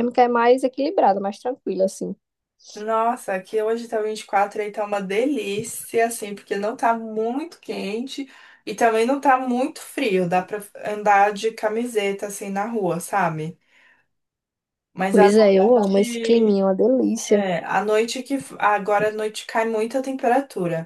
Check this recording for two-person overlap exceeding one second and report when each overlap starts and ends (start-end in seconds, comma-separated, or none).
15.1-16.6